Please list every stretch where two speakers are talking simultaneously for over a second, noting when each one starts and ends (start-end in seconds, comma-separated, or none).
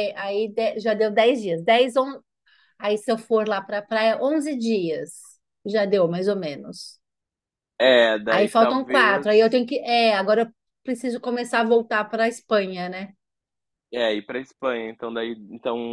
8.3-9.5